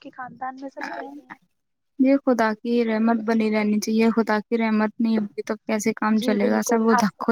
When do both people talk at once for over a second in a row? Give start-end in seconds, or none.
none